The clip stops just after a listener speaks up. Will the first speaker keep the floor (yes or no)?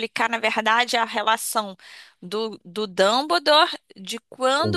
yes